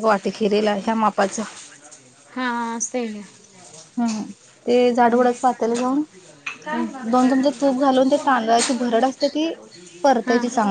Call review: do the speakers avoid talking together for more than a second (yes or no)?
no